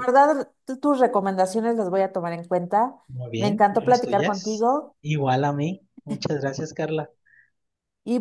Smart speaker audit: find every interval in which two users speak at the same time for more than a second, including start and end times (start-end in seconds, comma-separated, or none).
3.4-4.7